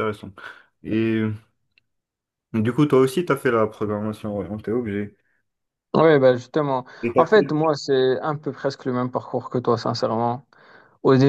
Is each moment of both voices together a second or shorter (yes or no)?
yes